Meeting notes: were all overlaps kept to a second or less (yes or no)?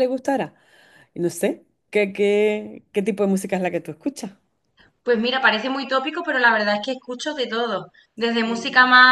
yes